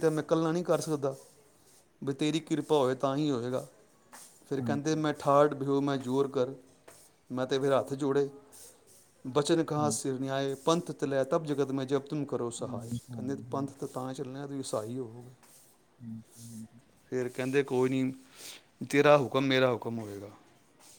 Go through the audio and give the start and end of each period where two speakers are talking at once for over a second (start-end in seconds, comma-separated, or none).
none